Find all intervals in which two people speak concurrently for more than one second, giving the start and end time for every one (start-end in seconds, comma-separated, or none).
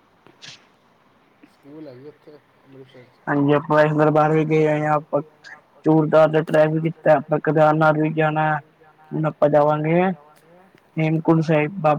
none